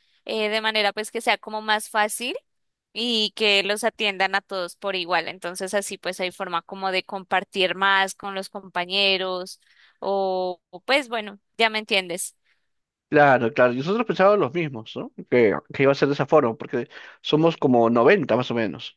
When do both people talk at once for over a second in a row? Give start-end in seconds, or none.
none